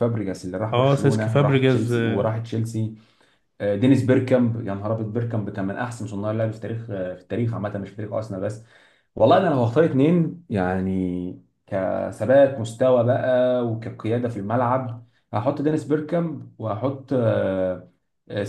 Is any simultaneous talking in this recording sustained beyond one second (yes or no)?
yes